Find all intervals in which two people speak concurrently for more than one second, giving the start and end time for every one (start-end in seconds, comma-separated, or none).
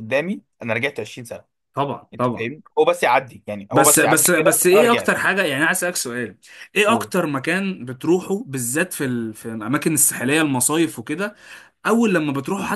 3.7-5.2